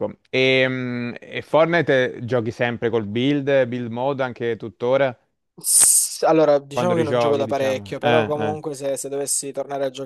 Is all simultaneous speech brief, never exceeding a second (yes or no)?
no